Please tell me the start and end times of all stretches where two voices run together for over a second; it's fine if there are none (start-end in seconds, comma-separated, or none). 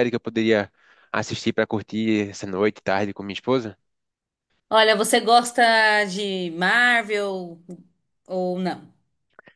none